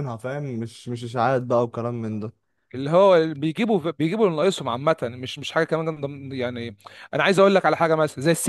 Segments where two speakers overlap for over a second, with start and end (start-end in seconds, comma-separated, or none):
none